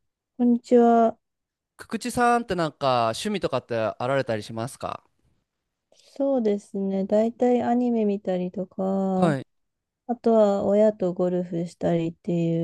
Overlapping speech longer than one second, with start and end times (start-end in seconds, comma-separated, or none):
none